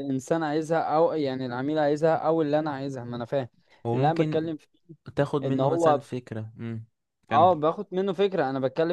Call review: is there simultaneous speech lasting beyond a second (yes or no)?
no